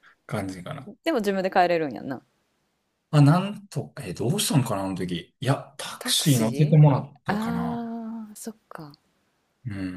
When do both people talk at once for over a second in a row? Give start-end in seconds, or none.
6.0-7.8